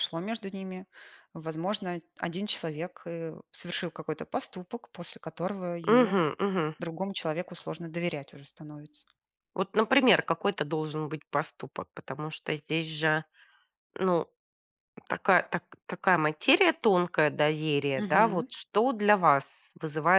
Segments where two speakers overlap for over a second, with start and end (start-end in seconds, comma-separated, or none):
none